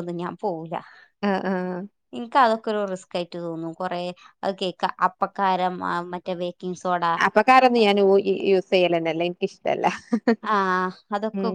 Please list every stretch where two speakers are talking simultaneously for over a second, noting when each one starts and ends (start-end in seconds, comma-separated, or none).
none